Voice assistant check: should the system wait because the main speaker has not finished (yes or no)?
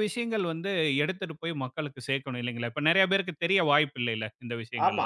no